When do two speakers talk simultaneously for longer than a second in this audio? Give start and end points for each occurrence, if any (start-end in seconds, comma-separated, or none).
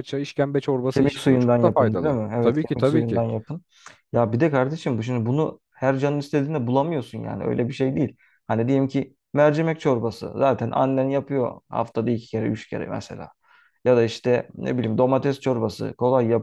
0.9-3.2